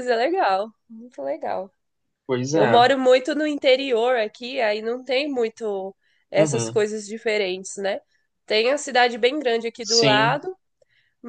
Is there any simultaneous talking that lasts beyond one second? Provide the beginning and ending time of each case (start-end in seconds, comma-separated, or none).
none